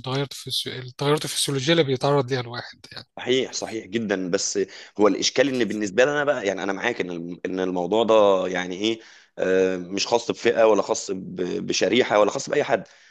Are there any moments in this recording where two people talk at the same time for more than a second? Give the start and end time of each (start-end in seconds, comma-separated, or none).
none